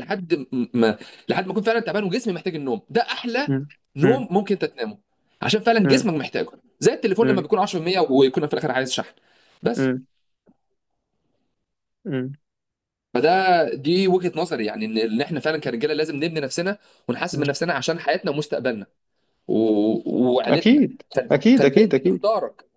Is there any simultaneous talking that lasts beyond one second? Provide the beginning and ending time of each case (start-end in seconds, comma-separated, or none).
20.5-22.2